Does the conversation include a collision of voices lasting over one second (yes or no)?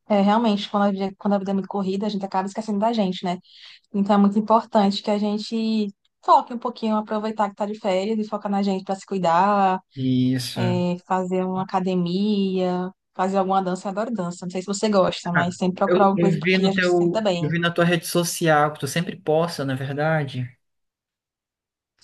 yes